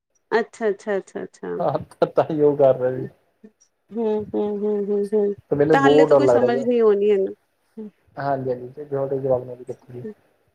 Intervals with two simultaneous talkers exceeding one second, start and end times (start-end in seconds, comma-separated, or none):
none